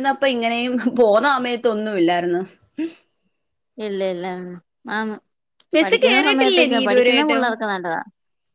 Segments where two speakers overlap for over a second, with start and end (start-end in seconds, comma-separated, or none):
5.8-7.5